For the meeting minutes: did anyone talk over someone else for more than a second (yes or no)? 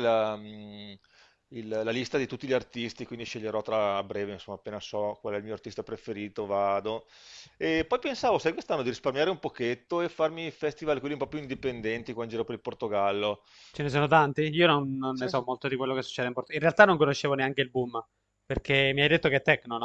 no